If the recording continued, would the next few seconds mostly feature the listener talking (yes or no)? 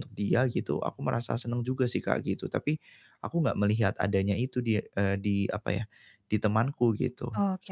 yes